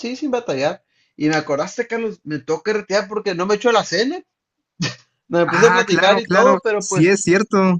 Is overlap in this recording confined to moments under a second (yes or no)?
no